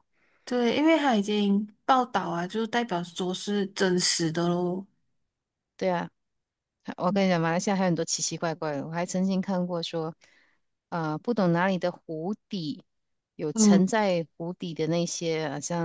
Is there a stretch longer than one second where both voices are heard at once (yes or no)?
no